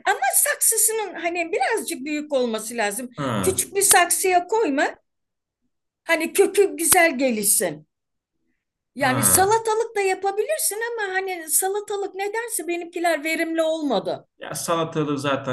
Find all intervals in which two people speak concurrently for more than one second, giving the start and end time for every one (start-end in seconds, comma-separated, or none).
none